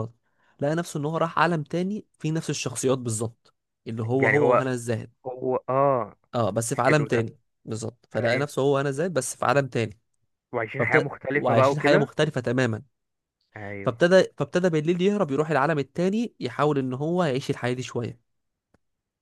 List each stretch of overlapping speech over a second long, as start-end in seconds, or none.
10.8-12.1